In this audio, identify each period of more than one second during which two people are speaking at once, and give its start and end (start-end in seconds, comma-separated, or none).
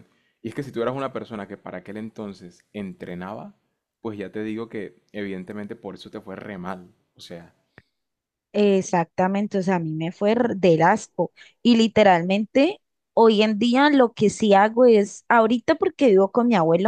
none